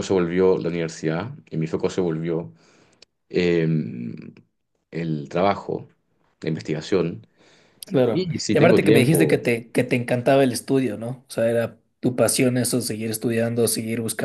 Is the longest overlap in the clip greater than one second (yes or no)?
yes